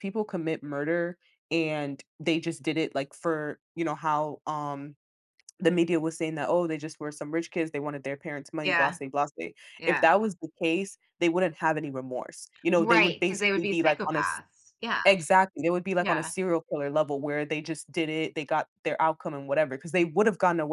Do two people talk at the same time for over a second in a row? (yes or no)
yes